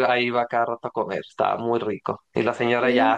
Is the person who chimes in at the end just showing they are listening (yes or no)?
yes